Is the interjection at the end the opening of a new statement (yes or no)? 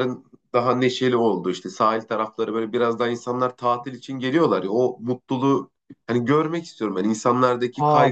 yes